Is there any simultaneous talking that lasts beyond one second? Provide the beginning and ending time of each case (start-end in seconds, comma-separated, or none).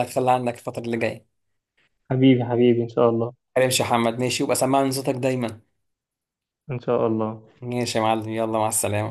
none